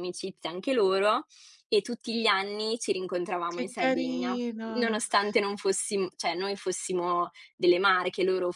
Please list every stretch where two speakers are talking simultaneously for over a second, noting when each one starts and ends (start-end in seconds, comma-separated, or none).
3.5-5.0